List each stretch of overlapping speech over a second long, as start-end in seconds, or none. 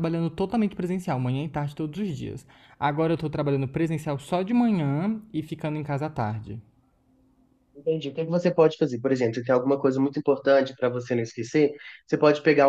none